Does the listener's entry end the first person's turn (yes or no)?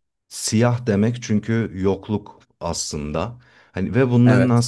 no